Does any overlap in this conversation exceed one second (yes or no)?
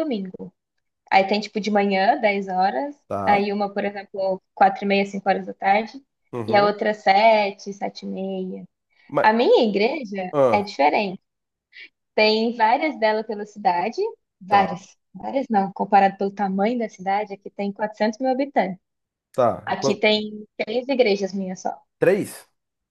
no